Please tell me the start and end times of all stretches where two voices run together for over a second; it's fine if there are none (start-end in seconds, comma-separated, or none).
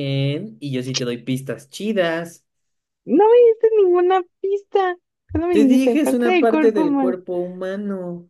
5.5-7.2